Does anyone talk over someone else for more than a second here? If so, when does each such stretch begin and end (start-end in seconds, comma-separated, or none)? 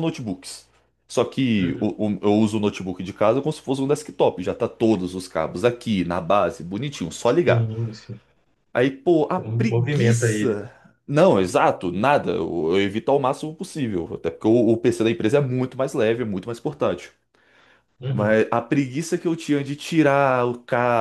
9.3-10.7